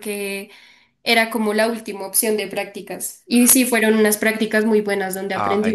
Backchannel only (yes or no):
no